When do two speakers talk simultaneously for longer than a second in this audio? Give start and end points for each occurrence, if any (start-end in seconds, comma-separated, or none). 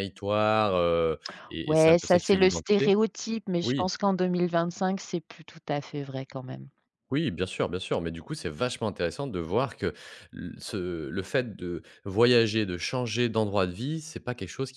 1.6-2.9